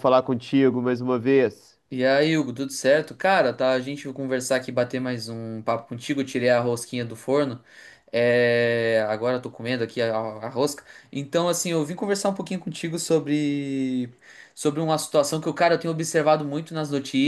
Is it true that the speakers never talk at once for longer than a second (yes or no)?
yes